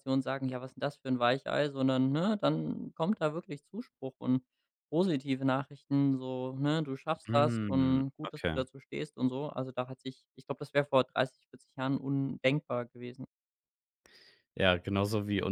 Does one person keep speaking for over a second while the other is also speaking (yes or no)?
yes